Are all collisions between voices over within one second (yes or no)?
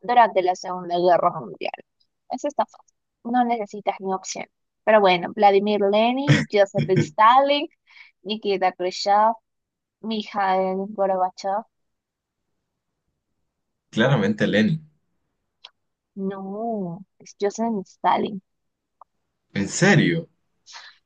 yes